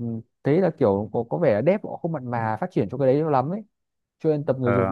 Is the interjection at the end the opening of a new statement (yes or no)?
no